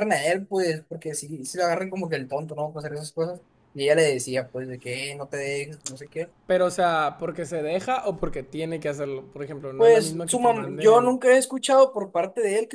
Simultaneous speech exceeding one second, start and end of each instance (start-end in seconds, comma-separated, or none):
9.8-11.1